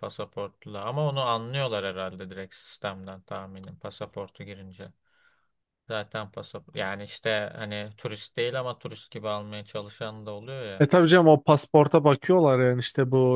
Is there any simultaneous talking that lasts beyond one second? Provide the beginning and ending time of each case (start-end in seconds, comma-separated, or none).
none